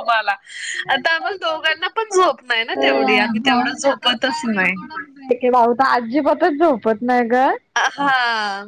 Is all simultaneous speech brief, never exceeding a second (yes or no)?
yes